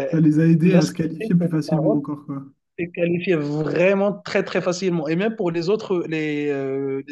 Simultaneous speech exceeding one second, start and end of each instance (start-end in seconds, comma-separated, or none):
0.6-2.1